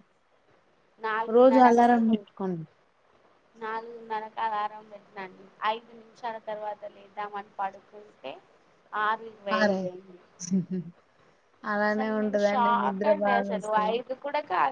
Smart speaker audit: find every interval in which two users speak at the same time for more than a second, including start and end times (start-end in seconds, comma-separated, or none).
11.9-13.9